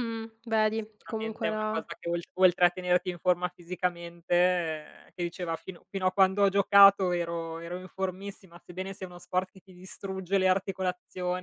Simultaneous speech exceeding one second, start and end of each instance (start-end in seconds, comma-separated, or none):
0.6-1.8